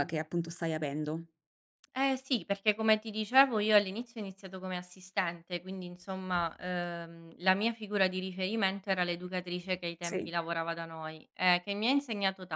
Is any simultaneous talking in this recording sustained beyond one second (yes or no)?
no